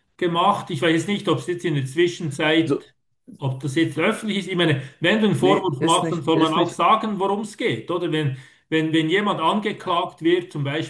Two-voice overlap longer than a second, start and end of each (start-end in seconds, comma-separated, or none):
5.4-6.8